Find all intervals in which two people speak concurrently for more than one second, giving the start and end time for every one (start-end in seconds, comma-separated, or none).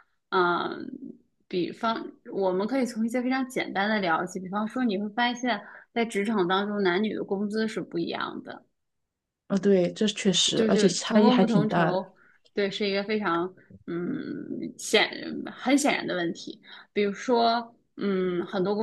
10.6-12.0